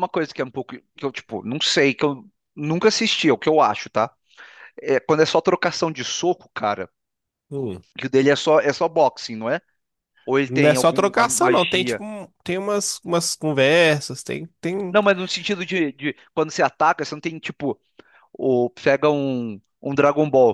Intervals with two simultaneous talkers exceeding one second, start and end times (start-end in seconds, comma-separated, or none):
10.4-12.0